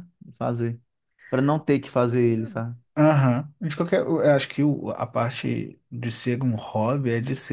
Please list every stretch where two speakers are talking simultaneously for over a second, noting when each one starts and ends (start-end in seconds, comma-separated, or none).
none